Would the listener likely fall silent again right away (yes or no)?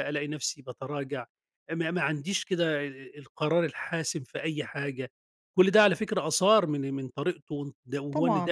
no